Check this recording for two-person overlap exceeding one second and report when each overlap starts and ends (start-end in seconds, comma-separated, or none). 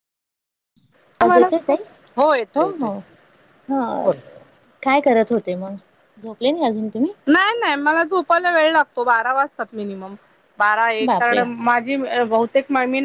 none